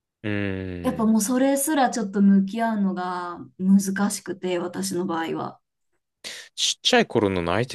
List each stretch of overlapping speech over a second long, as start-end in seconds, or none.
none